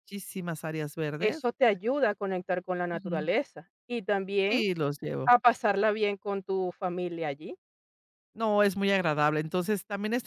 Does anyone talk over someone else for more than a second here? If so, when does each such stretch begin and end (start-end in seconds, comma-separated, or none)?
none